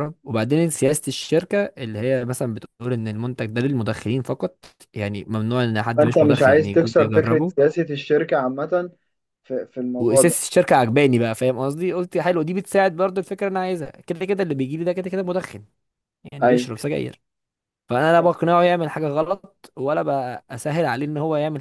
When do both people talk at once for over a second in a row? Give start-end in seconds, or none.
6.0-7.5